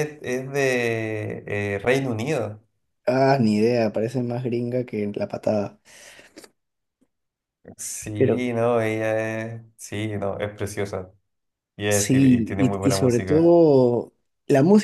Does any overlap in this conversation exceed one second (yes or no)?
yes